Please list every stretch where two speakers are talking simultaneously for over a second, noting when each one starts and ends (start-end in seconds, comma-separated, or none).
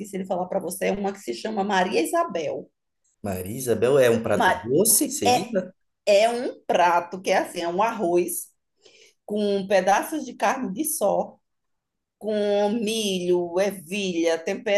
none